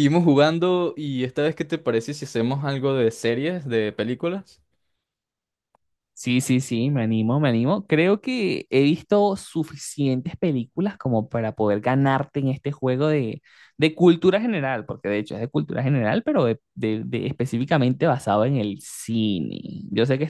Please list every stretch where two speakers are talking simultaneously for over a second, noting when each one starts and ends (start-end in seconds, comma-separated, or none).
none